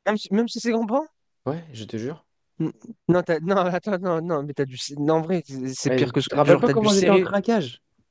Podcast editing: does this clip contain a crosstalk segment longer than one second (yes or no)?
yes